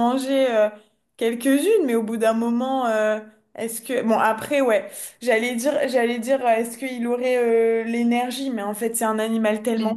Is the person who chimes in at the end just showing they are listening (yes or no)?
yes